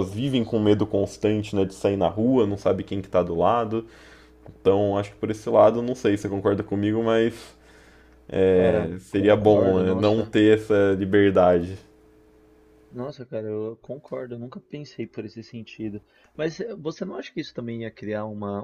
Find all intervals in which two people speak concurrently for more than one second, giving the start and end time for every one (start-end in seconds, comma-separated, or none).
8.5-10.3